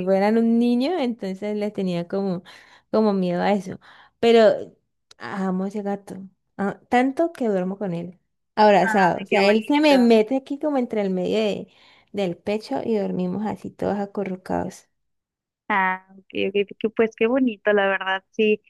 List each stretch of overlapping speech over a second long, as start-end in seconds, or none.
8.8-10.1